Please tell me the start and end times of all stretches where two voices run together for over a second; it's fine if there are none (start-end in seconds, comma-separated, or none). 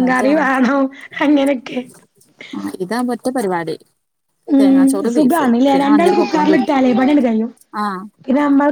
4.6-6.7